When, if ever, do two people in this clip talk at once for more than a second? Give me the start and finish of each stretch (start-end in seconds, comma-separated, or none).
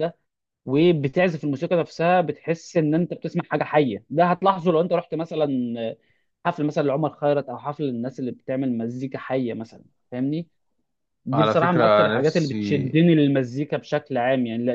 11.3-13.0